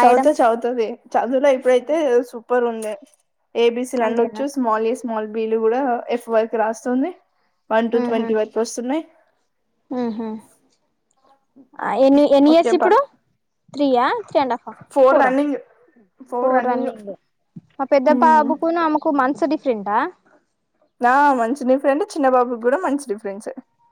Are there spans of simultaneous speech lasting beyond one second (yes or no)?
no